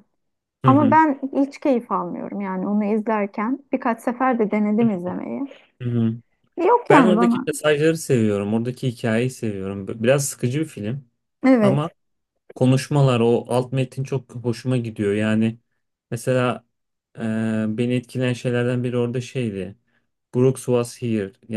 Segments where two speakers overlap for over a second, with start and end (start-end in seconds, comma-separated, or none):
none